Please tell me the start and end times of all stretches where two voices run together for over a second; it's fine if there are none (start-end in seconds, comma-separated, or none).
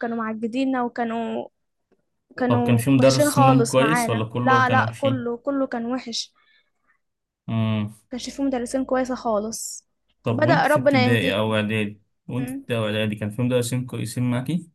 2.5-5.3, 10.3-11.6